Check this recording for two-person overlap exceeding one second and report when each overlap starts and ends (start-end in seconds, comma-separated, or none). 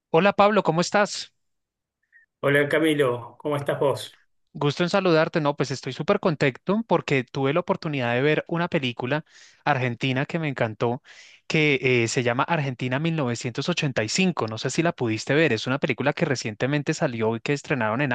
none